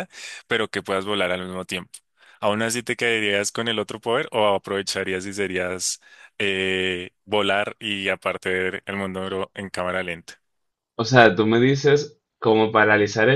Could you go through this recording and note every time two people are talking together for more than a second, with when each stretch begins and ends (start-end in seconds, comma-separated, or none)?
none